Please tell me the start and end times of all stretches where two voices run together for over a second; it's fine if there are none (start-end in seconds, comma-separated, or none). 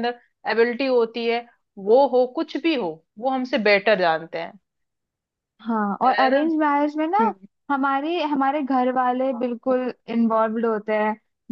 none